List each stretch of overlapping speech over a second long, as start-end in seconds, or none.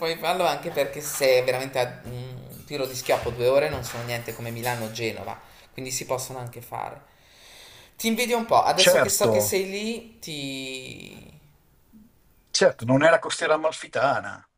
none